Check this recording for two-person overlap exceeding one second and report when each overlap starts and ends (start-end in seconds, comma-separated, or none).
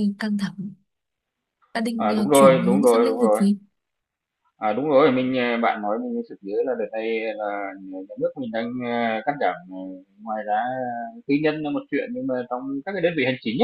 2.0-3.4